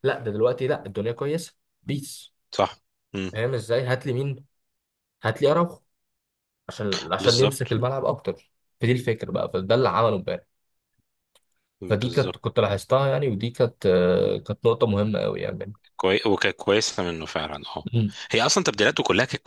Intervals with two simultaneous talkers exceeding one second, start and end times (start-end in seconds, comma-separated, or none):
none